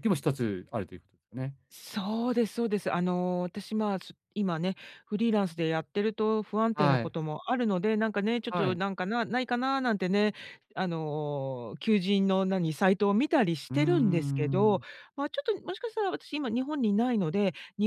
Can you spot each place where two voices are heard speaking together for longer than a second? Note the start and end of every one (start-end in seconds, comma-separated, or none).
none